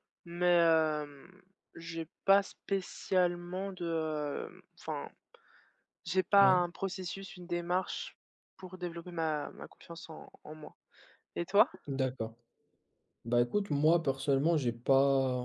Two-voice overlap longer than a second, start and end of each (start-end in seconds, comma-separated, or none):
none